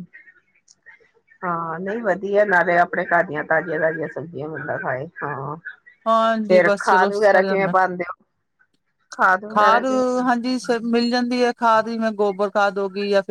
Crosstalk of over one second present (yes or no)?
yes